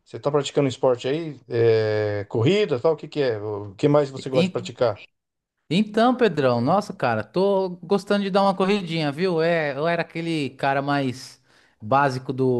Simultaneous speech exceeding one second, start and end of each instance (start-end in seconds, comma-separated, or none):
none